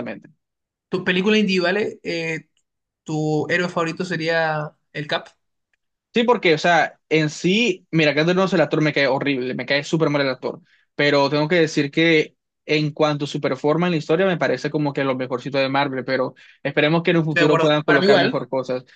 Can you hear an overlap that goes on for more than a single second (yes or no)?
yes